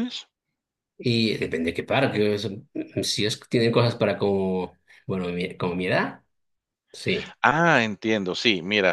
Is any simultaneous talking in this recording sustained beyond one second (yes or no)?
no